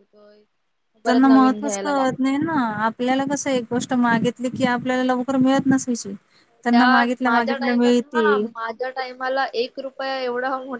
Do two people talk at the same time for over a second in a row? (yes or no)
yes